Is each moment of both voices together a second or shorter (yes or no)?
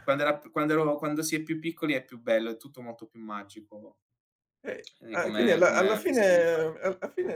no